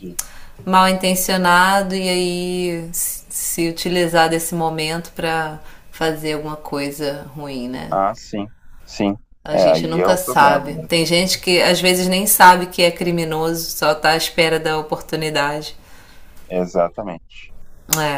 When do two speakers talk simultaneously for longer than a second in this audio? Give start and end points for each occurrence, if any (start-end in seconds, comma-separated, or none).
9.5-11.1